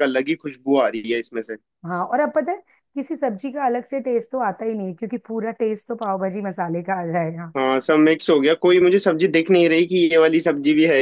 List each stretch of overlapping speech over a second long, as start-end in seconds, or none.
none